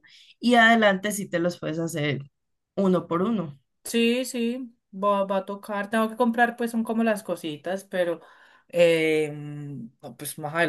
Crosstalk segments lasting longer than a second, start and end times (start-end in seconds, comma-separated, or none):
none